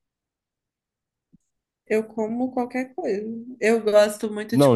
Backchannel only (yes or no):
no